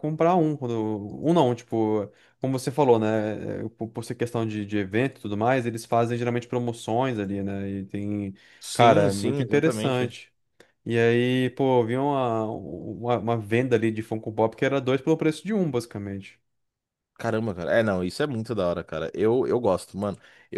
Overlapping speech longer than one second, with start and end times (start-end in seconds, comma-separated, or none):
8.7-10.1